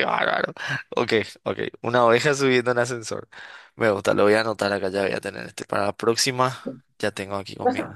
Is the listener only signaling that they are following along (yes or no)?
yes